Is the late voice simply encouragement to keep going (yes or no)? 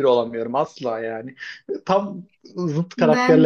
no